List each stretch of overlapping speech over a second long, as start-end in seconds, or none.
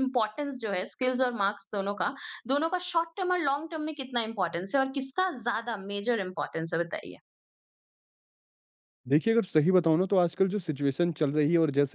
none